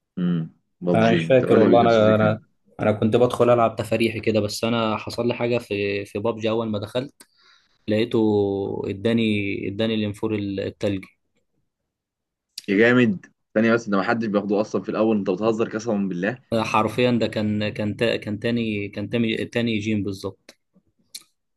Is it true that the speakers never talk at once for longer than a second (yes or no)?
no